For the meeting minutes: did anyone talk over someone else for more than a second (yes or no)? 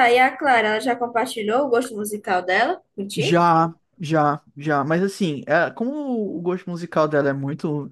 no